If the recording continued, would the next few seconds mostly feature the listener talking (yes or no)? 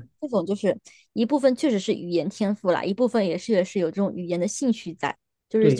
yes